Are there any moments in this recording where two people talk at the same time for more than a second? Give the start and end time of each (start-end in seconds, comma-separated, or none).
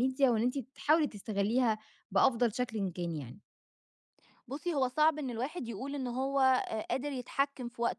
none